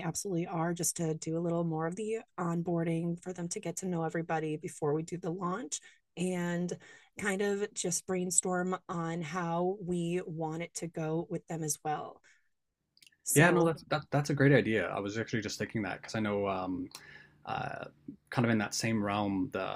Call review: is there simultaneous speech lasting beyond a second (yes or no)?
no